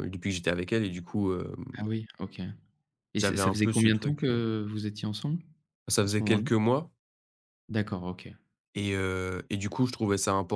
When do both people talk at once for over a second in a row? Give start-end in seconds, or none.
3.2-4.4